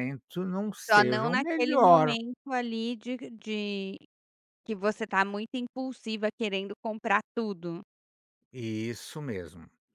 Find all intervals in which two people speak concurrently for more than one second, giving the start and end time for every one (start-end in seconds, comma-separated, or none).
0.9-2.2